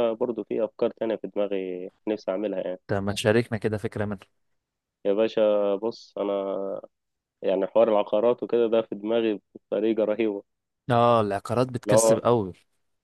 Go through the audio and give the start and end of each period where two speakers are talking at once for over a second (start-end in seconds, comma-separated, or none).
none